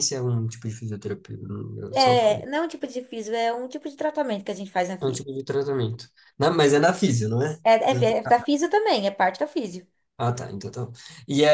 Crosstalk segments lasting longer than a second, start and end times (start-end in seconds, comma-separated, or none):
none